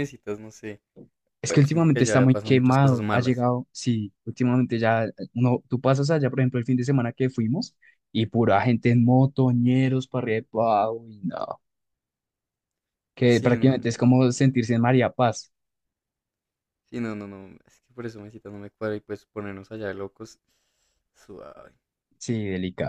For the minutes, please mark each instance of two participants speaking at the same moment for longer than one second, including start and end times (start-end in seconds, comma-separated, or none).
1.5-3.5, 13.2-14.7